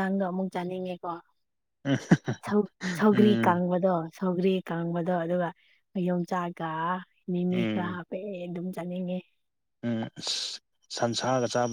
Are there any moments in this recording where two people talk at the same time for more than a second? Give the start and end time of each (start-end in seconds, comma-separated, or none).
none